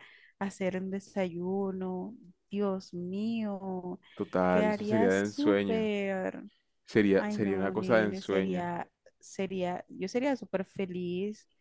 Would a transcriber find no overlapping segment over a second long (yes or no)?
no